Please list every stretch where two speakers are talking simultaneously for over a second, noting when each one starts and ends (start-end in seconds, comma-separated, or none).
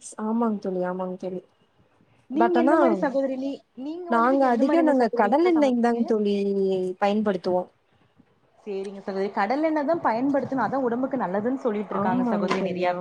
4.2-6.1